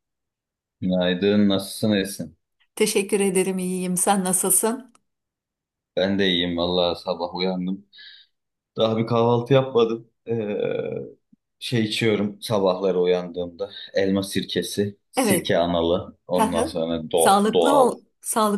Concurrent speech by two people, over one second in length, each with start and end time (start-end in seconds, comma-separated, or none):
16.4-17.9